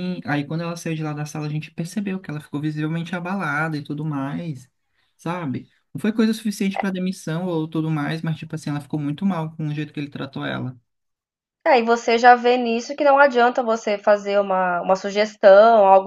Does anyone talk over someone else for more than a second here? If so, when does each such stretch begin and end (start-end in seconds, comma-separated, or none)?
none